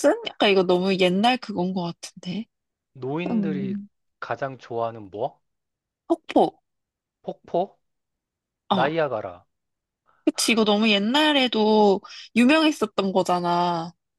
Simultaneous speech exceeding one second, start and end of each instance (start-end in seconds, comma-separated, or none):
none